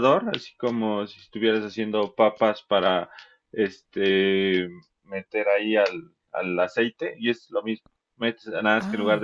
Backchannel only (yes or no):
yes